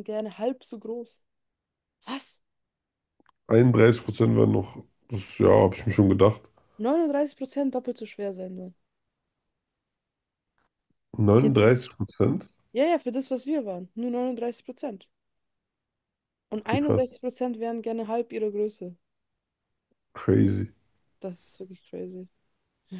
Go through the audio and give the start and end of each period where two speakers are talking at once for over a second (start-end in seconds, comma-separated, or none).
none